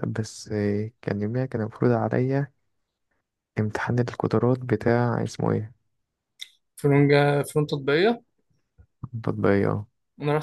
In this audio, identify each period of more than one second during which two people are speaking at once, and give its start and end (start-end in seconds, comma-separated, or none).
none